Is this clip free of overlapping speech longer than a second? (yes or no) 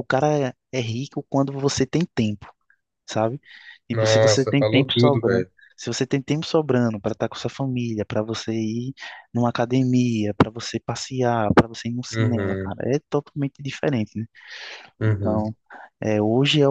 no